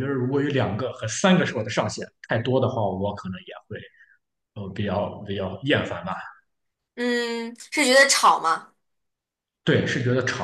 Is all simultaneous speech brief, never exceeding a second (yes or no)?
yes